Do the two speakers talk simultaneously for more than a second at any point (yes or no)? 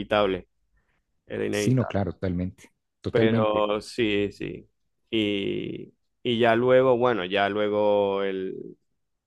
no